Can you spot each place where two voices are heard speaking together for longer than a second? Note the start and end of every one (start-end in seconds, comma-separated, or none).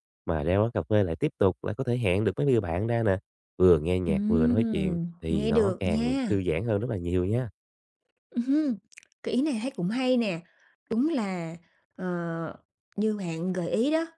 4.1-6.4